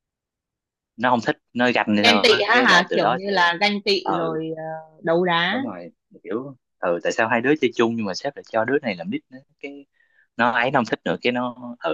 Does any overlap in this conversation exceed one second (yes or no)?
yes